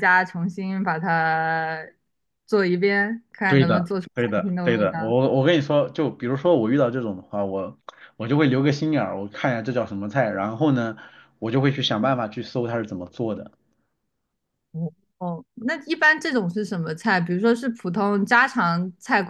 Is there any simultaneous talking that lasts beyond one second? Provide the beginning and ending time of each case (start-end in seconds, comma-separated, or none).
3.5-5.1